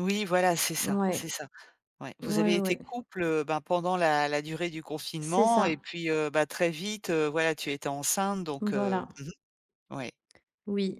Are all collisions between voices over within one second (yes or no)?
yes